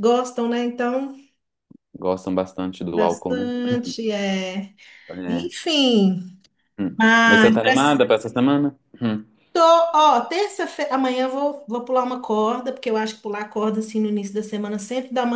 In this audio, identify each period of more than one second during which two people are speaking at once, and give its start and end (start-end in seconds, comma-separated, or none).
none